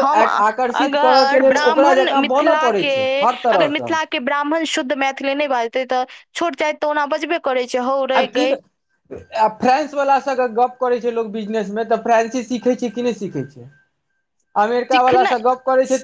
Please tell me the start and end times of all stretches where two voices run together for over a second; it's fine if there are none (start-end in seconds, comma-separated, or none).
1.5-3.9